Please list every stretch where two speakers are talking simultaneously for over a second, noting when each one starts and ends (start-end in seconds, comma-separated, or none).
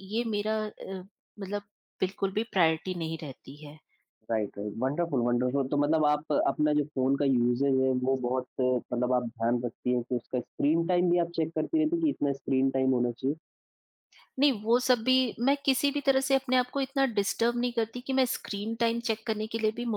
none